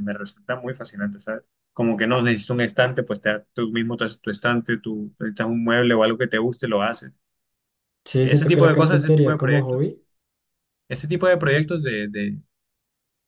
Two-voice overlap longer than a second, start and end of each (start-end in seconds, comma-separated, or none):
8.2-9.9